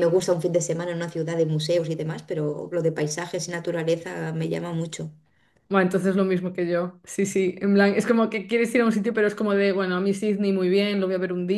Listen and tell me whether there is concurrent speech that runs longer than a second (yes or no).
no